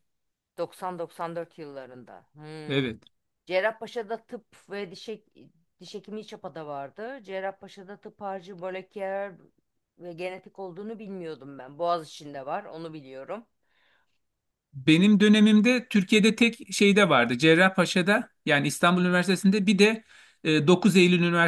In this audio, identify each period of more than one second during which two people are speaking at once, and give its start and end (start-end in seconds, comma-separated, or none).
none